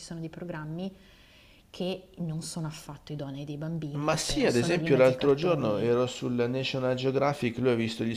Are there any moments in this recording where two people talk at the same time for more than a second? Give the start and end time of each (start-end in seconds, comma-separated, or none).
4.0-5.9